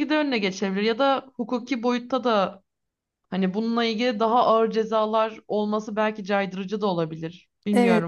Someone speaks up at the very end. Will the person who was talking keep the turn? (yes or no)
no